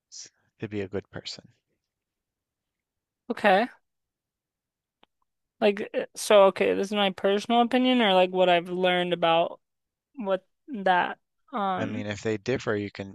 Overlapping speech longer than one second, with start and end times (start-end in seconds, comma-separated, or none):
none